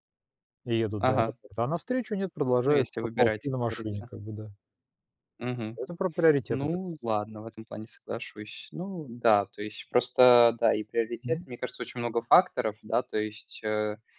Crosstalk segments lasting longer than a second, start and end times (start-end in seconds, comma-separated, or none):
2.6-4.1